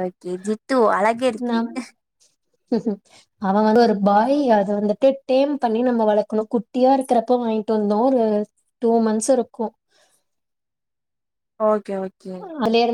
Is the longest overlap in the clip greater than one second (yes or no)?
no